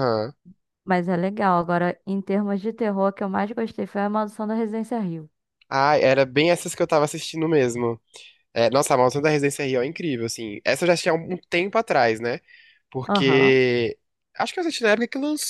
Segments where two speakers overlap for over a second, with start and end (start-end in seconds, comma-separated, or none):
none